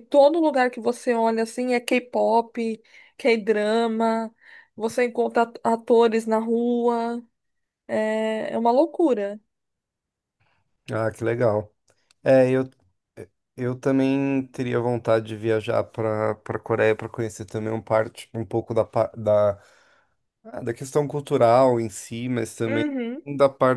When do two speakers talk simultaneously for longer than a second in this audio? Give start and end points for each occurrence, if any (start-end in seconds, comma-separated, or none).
none